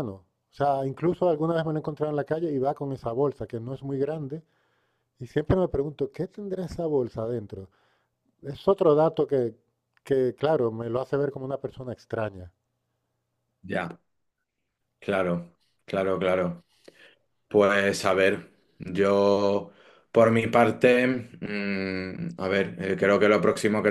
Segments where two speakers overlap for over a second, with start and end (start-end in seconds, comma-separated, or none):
none